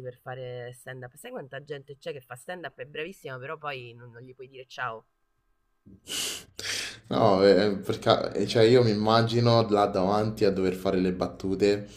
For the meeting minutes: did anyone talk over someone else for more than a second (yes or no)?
no